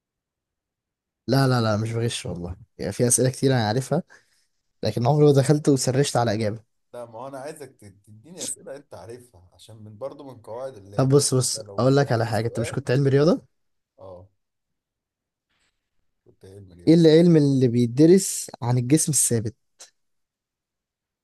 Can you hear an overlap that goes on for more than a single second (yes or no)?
yes